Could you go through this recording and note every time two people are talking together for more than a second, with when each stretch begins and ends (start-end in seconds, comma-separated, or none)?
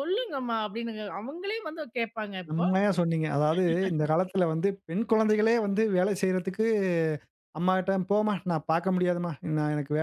none